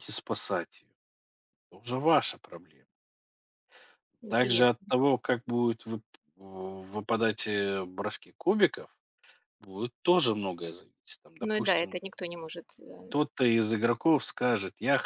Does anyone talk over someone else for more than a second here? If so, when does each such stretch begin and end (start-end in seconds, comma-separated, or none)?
none